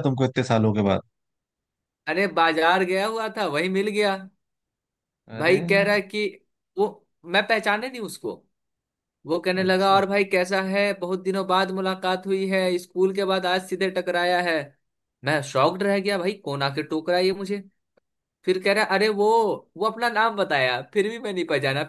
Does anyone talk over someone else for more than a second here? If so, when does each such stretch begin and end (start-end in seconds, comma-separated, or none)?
none